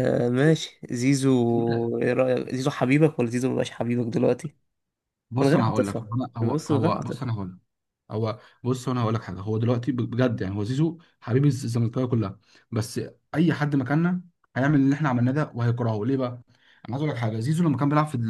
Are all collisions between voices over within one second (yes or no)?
no